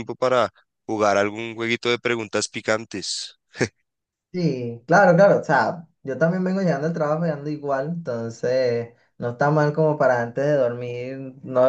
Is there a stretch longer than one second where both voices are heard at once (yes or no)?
no